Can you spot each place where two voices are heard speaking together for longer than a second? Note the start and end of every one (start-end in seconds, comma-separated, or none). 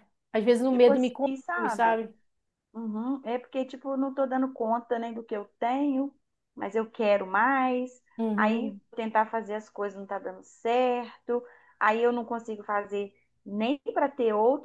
0.7-2.0